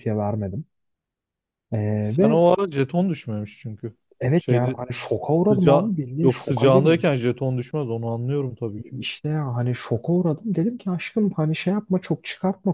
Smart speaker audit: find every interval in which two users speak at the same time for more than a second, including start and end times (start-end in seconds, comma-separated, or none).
5.5-7.0